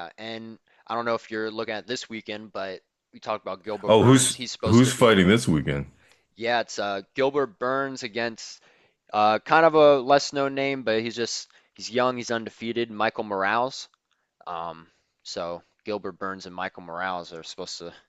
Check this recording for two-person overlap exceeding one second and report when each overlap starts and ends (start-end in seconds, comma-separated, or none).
3.9-5.1